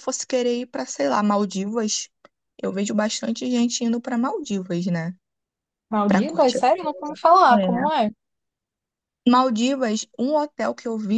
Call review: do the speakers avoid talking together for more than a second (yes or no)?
yes